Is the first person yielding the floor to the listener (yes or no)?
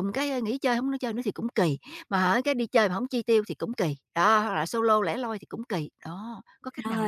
yes